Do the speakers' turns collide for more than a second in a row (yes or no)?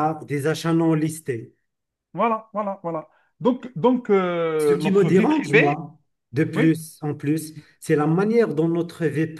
yes